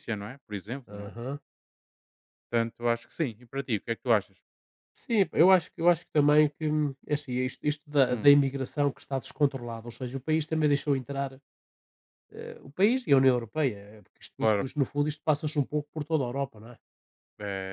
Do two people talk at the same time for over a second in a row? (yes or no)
no